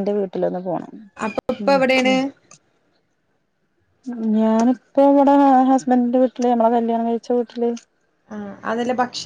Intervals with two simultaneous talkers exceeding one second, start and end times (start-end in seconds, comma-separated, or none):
none